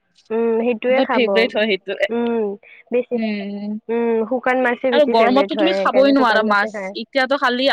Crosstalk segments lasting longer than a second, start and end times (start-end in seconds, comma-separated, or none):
5.0-6.9